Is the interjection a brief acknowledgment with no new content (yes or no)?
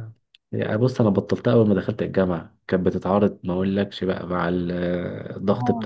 yes